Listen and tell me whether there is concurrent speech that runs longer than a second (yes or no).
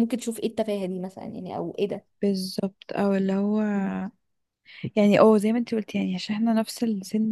no